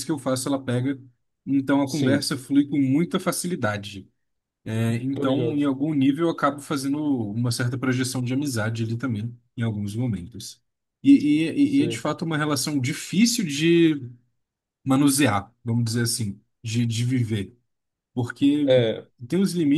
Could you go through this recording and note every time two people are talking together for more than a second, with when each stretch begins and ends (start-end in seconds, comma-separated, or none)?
none